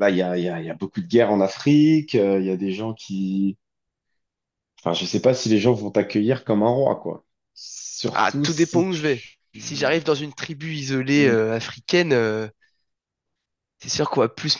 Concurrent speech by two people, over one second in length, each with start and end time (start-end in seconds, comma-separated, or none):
8.1-9.9